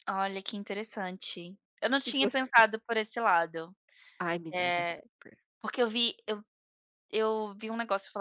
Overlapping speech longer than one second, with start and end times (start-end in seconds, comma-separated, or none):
none